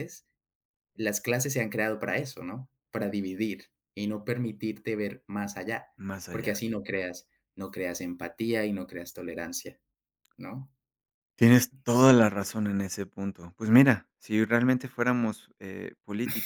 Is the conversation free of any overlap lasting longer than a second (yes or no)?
yes